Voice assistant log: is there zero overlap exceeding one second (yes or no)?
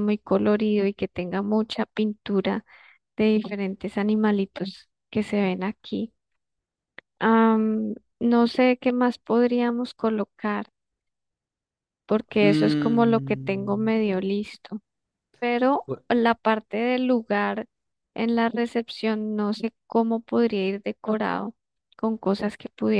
no